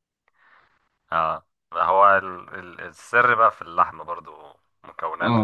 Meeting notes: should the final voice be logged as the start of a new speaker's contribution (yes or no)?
yes